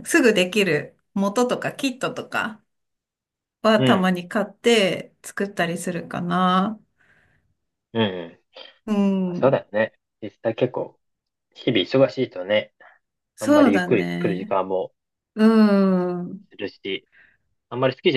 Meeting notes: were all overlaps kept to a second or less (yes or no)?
no